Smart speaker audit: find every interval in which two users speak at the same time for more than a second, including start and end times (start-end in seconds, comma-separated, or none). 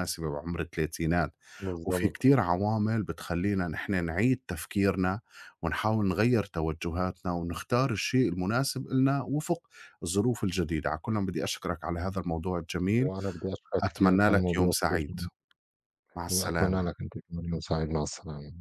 13.8-15.2